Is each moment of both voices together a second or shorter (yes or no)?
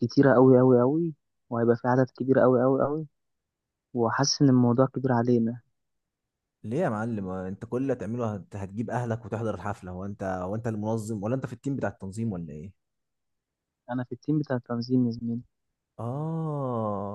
yes